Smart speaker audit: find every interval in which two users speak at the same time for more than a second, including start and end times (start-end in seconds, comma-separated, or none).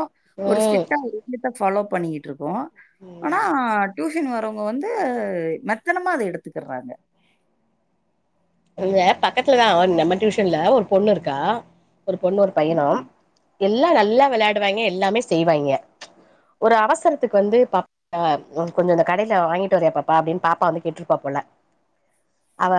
none